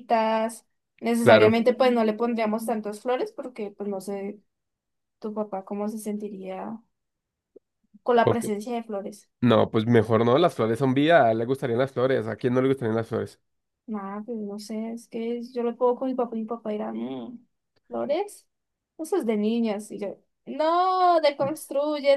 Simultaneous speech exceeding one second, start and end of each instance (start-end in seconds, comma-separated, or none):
none